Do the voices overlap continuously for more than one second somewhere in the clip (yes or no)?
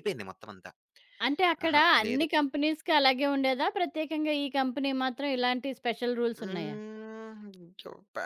no